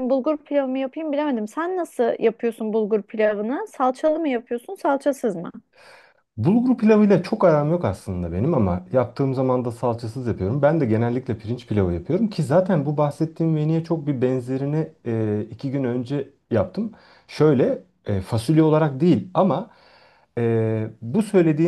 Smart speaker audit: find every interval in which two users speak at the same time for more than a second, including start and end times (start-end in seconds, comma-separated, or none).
none